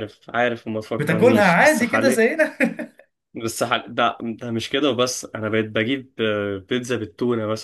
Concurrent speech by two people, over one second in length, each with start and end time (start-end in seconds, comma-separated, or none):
1.0-2.3